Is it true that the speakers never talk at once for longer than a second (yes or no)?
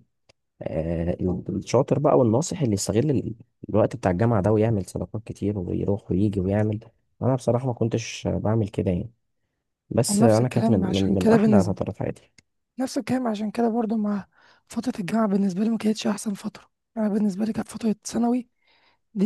no